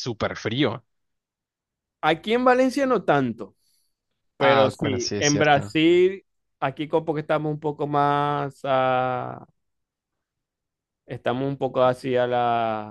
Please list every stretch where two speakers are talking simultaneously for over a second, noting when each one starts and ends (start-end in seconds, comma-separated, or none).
4.4-5.8